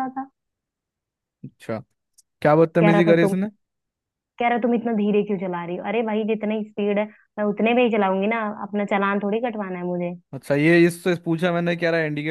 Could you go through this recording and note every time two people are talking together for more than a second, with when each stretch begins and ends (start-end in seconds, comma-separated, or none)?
none